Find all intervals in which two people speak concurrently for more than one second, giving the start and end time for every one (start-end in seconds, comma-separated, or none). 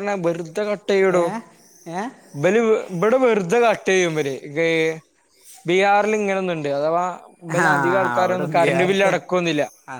7.6-9.1